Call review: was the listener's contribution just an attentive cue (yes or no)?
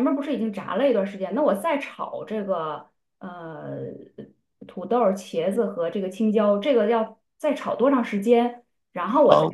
yes